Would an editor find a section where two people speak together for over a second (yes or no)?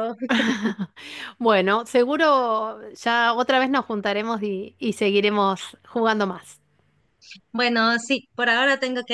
no